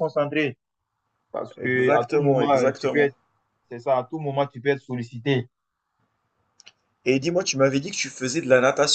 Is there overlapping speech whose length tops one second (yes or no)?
yes